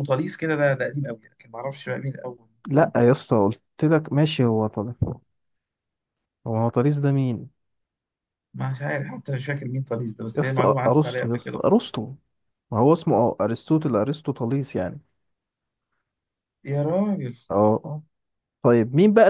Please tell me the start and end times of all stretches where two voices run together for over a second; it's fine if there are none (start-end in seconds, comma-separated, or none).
10.3-11.6